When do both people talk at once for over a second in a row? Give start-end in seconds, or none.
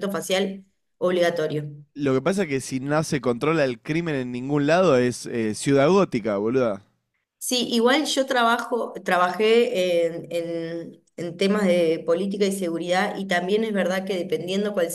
none